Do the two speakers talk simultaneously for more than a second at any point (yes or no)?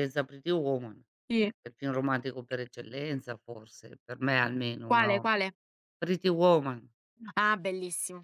no